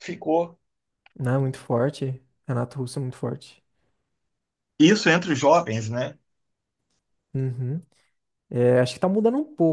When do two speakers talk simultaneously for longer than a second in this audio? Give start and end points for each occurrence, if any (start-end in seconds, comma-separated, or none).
none